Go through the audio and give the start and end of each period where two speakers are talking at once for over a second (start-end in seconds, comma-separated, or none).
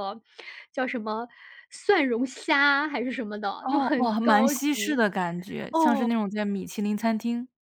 3.6-5.0